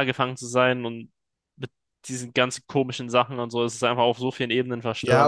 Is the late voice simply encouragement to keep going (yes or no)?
no